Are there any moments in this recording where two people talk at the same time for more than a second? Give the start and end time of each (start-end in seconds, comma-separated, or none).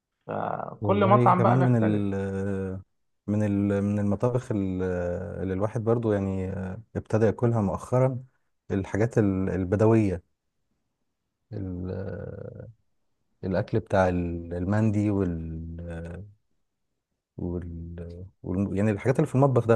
0.8-2.0